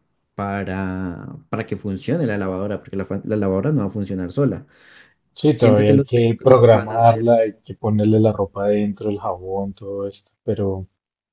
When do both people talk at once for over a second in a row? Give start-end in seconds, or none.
5.5-7.3